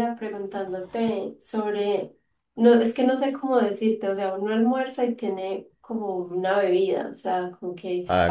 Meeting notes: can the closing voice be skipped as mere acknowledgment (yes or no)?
yes